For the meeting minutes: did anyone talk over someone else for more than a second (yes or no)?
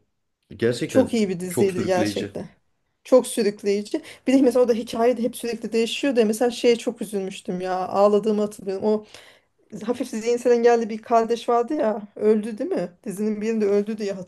yes